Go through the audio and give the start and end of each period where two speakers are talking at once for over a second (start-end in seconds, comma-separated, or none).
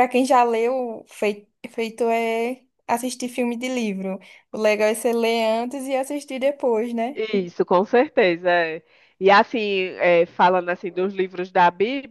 none